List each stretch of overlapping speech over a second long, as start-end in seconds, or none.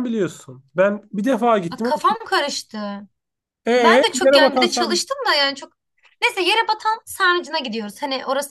3.8-5.0